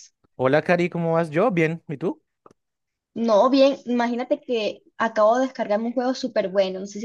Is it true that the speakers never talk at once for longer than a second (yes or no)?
yes